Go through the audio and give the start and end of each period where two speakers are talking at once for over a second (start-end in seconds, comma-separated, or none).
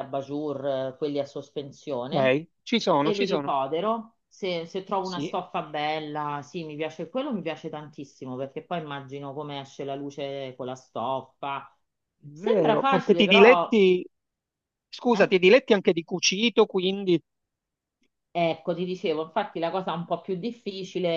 12.3-13.8